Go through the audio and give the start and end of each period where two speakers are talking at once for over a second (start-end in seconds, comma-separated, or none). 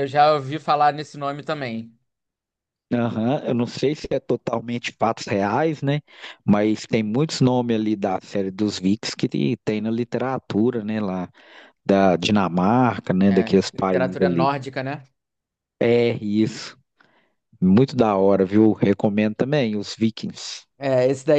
13.2-14.5